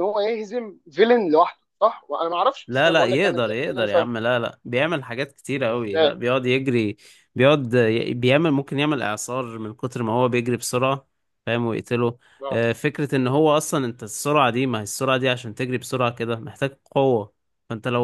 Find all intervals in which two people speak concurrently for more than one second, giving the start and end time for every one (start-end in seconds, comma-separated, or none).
2.7-4.1